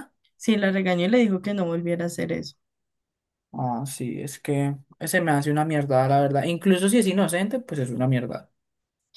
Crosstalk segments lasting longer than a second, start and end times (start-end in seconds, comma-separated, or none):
none